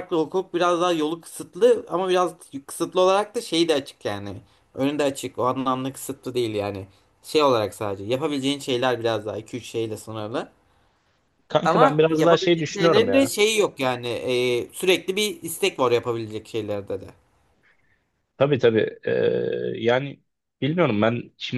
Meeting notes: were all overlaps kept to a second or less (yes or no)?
no